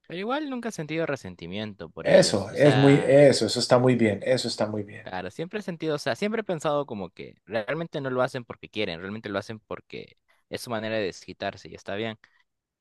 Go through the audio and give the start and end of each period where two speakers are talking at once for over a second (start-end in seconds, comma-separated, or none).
2.0-3.2